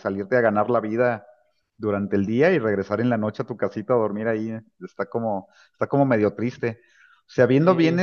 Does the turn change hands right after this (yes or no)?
no